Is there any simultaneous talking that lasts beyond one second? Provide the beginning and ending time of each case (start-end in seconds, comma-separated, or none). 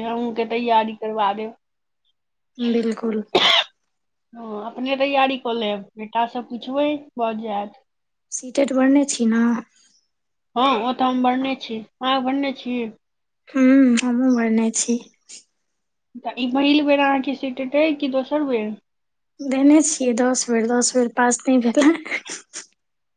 none